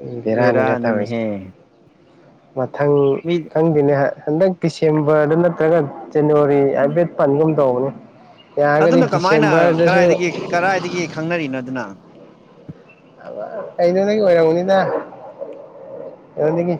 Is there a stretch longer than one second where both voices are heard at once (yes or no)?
no